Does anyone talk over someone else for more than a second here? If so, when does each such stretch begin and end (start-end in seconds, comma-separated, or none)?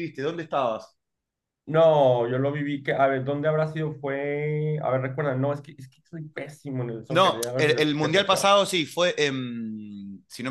7.1-8.6